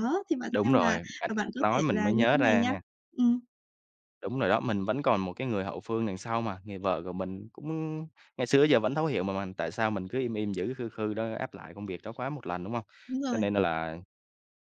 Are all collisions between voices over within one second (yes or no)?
no